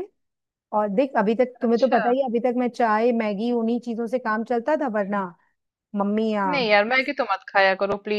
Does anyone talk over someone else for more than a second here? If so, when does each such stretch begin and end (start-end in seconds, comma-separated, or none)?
none